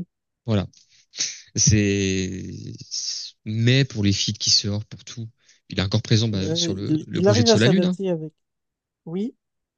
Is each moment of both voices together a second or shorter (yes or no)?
no